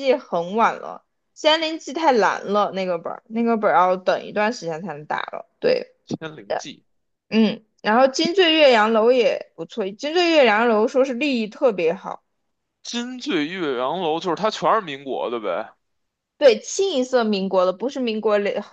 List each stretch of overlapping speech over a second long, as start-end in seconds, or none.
none